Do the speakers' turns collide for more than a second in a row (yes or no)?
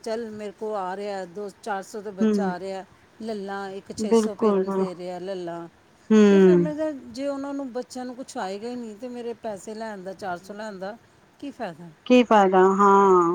no